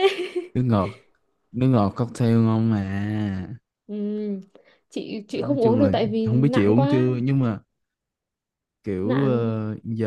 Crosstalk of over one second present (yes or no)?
yes